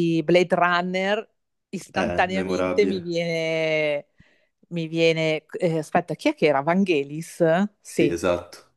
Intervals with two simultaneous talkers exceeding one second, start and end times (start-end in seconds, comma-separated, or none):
1.9-3.2